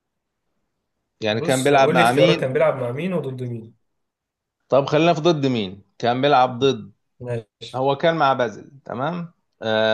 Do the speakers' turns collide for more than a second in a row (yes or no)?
yes